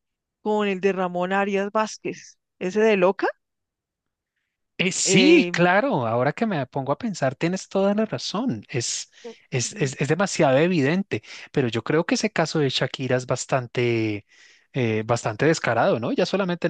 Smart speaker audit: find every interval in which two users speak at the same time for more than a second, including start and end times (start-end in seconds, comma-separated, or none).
none